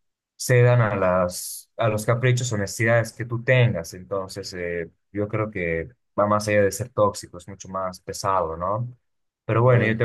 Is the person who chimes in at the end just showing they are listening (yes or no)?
yes